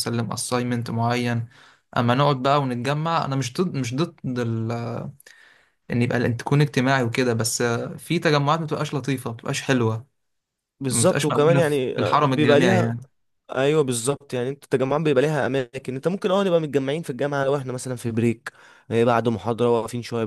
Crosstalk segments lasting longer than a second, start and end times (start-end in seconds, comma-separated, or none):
10.9-12.9